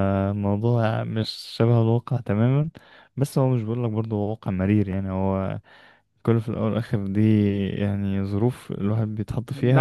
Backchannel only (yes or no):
no